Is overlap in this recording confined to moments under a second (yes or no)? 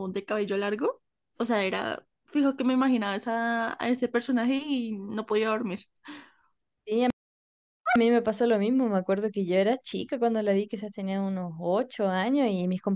yes